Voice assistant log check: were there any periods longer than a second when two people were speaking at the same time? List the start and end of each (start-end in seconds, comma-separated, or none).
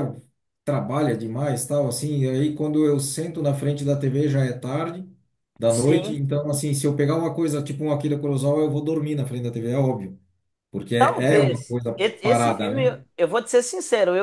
11.0-12.9